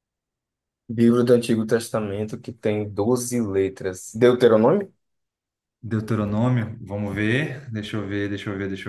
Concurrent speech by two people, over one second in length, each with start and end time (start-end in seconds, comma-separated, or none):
none